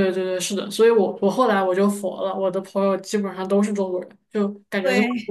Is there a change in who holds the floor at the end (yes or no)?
no